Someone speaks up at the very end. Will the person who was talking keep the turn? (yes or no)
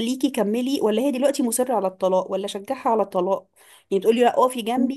yes